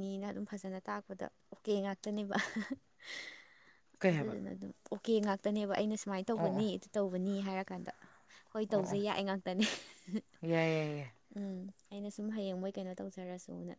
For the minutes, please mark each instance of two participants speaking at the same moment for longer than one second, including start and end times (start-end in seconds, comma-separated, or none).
none